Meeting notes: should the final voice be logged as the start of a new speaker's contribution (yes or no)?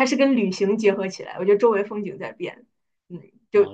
yes